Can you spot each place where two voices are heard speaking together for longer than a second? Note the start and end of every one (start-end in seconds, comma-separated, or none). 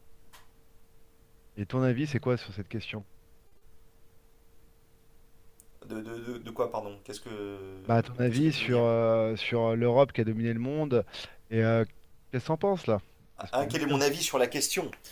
none